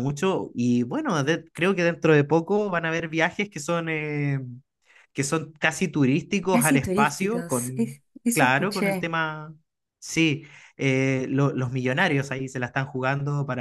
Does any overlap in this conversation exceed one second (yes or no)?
yes